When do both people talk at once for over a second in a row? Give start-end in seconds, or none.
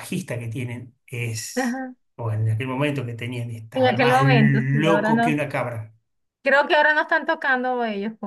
3.7-5.4